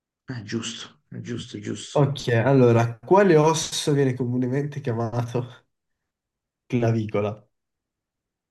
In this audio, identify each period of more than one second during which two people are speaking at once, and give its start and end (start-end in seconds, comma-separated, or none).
none